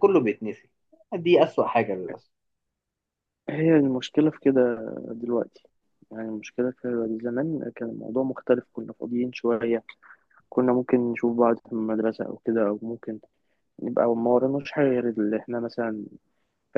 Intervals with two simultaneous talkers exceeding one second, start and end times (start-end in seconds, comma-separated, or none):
none